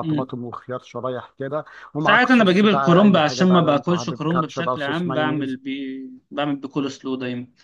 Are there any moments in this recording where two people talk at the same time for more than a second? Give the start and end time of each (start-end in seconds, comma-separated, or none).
2.0-5.6